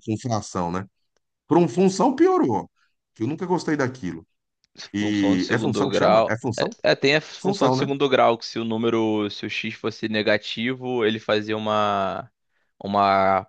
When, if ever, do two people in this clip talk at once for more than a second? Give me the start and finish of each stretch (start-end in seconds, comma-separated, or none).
5.0-6.8